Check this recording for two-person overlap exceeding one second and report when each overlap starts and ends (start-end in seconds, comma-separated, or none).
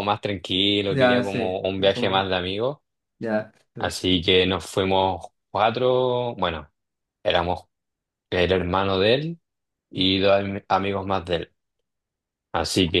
0.9-2.3